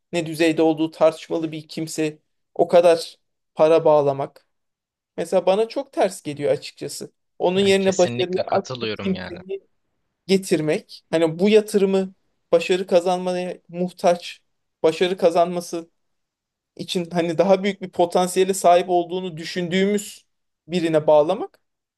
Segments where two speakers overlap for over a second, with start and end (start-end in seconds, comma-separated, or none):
7.6-9.4